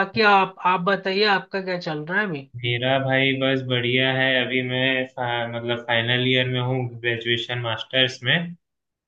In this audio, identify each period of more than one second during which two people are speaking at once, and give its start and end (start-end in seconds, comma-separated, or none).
none